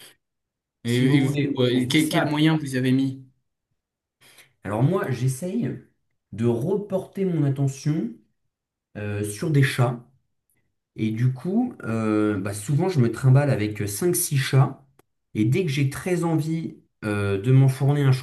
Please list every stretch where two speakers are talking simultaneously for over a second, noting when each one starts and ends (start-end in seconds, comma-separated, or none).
0.8-2.5